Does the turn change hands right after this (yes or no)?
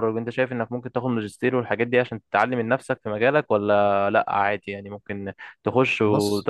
no